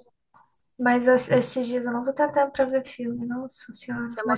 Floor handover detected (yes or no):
yes